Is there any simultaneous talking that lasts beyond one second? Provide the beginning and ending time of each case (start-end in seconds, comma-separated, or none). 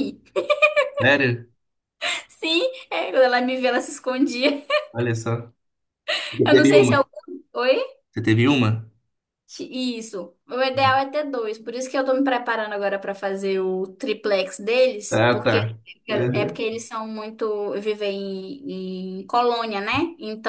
15.1-16.6